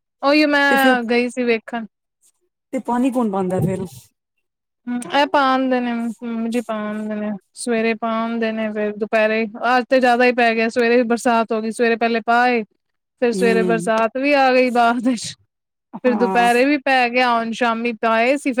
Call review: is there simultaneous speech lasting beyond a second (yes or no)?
no